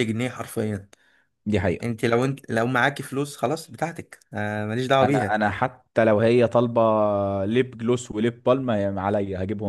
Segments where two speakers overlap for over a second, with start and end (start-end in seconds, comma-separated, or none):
none